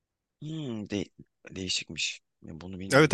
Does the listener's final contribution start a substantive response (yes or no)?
yes